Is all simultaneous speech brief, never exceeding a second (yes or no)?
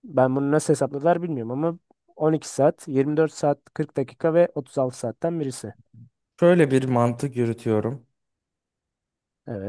yes